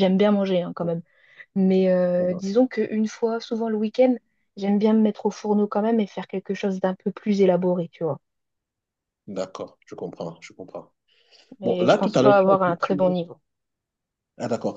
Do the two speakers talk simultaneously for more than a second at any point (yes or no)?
yes